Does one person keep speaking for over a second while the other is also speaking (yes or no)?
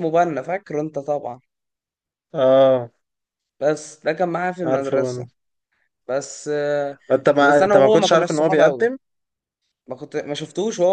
yes